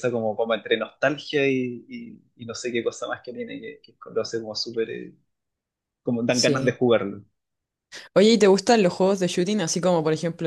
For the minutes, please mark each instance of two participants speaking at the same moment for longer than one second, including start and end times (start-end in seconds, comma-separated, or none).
none